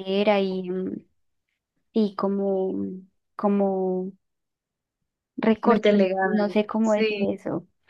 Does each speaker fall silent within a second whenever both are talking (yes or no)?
no